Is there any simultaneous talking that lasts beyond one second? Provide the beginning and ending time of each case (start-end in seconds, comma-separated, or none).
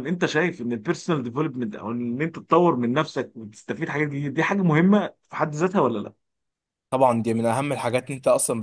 none